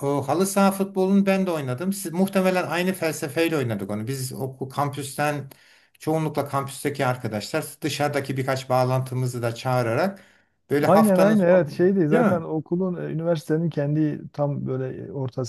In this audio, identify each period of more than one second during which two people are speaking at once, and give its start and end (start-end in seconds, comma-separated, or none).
10.8-12.5